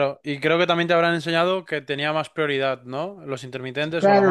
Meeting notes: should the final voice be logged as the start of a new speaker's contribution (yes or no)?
yes